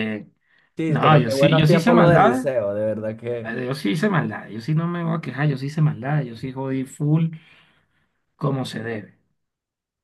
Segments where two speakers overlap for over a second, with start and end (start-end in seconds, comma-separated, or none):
0.9-2.5